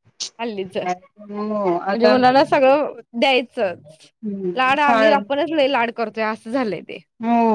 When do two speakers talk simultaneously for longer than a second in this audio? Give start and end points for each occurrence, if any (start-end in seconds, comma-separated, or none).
1.3-2.5